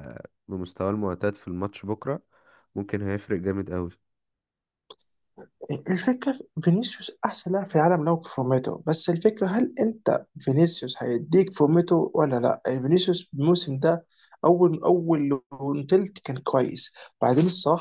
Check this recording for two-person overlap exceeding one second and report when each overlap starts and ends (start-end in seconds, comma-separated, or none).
none